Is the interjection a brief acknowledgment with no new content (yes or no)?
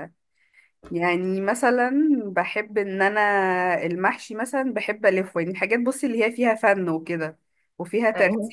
yes